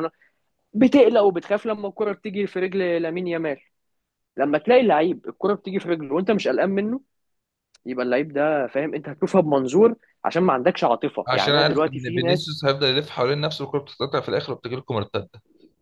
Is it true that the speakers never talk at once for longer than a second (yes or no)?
no